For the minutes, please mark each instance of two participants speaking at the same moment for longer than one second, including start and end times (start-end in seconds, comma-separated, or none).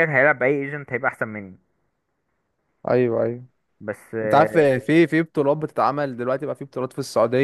none